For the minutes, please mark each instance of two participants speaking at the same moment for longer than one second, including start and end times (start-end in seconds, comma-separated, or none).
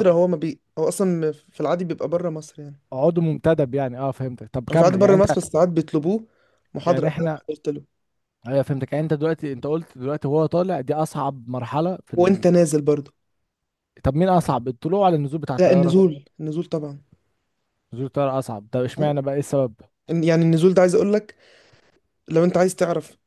none